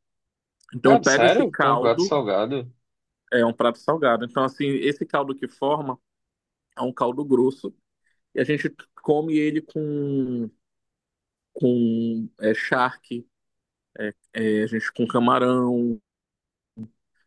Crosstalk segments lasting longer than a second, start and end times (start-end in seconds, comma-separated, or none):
0.8-2.2